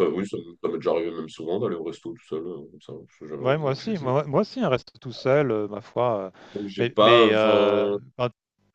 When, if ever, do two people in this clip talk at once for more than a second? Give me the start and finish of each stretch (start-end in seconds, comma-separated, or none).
6.8-8.0